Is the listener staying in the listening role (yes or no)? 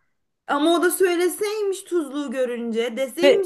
yes